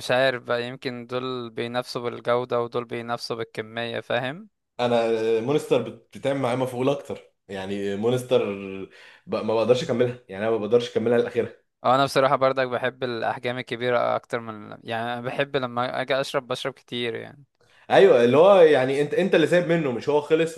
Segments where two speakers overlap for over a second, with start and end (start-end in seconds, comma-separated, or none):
none